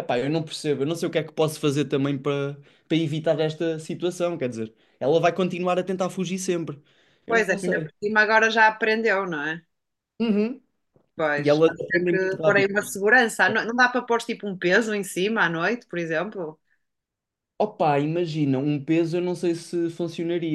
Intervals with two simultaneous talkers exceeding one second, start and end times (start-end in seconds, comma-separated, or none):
11.4-12.7